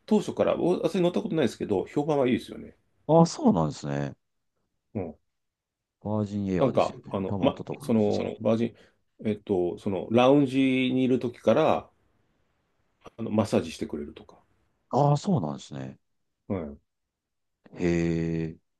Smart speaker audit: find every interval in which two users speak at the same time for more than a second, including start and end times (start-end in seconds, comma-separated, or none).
6.6-8.3